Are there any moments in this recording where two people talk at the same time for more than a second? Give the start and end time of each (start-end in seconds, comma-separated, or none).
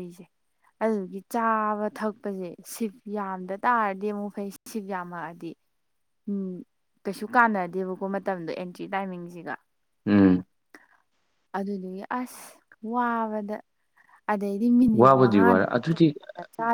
14.9-16.1